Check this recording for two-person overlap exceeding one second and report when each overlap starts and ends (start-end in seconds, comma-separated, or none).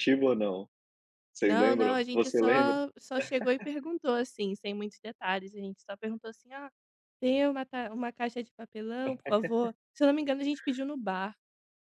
1.4-2.8